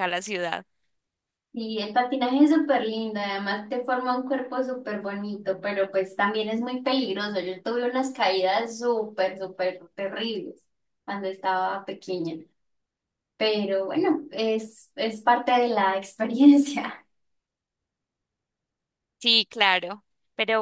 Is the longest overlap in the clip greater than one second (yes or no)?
no